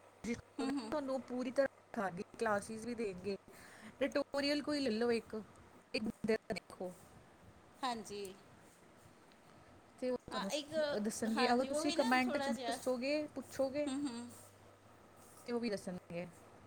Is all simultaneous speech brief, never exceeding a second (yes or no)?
no